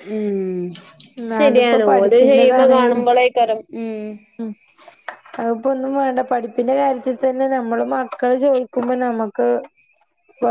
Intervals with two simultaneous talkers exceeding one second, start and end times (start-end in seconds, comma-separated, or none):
1.5-3.0